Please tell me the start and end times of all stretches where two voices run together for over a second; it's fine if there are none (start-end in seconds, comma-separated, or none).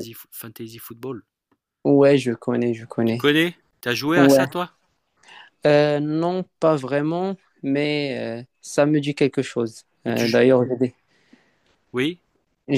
none